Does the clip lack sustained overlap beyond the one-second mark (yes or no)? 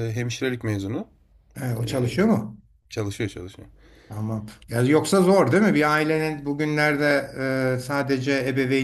yes